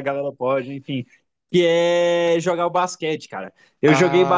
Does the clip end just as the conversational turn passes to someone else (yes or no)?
no